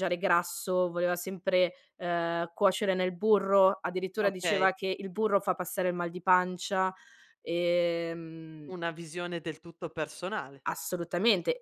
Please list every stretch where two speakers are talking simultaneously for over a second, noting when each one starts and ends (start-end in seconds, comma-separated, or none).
none